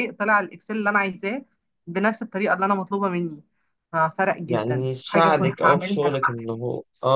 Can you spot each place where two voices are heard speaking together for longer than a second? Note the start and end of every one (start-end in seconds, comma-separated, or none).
4.5-6.5